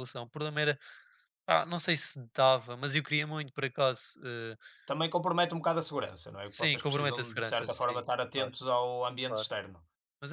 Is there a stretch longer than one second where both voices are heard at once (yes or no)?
yes